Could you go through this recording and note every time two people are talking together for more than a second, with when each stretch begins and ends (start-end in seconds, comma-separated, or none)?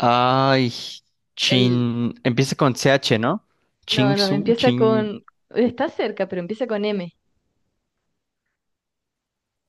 3.9-5.1